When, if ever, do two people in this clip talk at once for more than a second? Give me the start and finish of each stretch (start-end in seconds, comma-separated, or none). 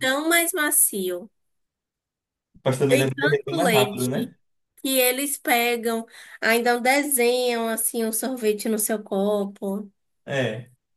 2.9-4.3